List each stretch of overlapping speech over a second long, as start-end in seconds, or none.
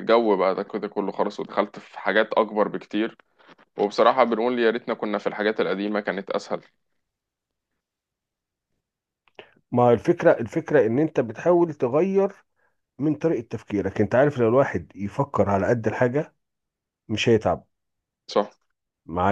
none